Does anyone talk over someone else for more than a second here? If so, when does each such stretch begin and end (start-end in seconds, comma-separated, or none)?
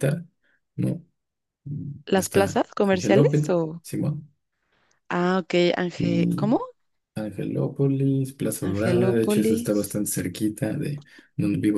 2.1-3.8, 8.6-10.0